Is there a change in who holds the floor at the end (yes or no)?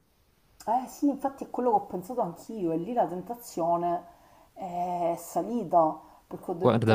no